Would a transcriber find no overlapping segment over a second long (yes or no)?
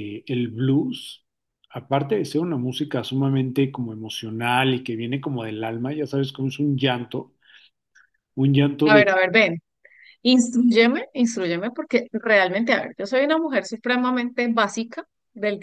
yes